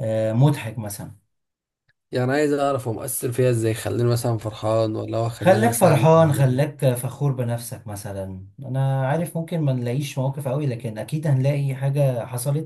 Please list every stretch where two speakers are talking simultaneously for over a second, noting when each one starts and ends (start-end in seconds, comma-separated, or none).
5.4-6.7